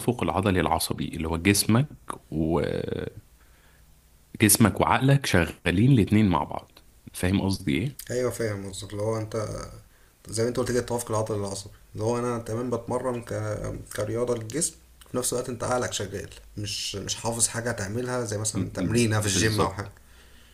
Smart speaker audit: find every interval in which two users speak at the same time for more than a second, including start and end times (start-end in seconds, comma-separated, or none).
18.5-19.9